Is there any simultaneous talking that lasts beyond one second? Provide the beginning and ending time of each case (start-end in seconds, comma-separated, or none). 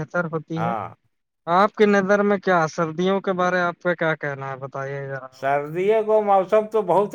none